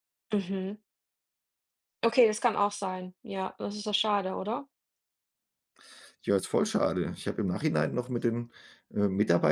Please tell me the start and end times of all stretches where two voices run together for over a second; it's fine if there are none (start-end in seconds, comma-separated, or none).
none